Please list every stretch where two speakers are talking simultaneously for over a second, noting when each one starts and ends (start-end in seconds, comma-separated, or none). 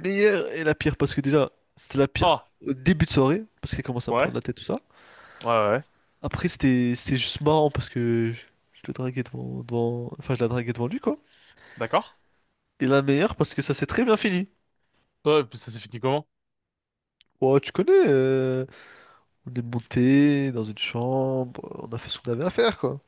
none